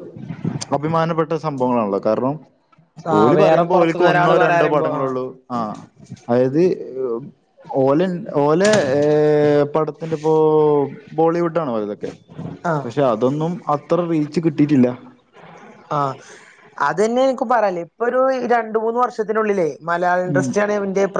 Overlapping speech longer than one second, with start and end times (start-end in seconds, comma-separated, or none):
3.2-5.1